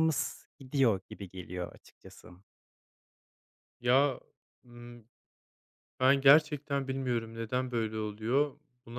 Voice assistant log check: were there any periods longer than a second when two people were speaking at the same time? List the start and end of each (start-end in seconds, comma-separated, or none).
none